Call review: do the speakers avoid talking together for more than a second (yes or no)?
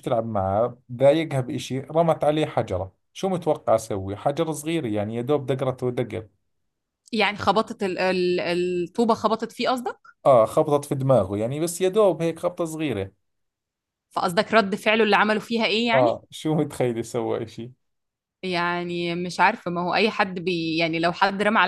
yes